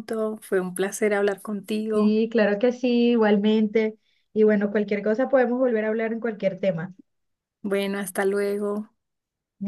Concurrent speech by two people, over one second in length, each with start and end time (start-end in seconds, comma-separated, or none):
none